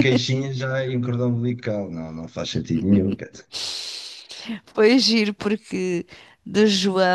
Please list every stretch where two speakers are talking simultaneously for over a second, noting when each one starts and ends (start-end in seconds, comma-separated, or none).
none